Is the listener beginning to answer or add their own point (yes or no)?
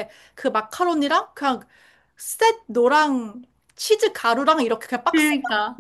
no